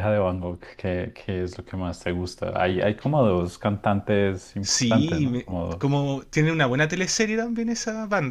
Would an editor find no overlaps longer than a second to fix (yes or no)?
no